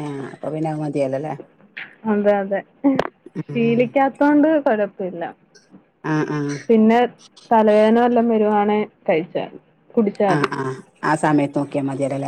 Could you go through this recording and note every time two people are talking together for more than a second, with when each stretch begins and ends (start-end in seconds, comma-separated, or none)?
none